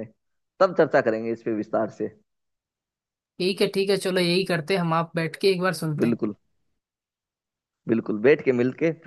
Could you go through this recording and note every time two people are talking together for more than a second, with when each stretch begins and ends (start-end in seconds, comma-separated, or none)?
none